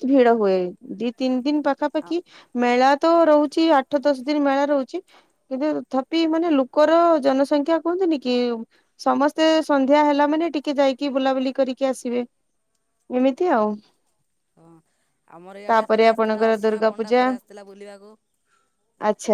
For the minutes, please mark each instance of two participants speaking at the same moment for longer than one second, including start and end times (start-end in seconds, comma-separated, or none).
15.7-17.2